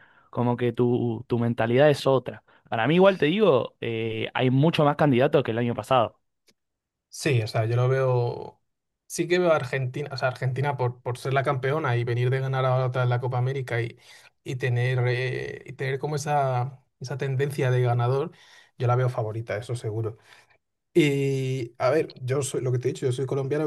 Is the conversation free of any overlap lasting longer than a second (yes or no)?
yes